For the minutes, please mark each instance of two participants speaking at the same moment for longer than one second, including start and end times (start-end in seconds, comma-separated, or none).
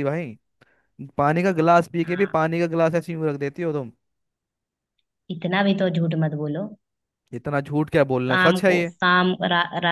none